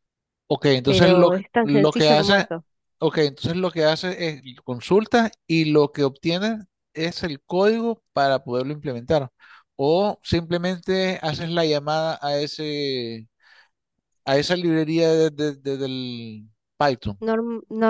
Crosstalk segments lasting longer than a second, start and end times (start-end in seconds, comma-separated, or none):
0.8-2.5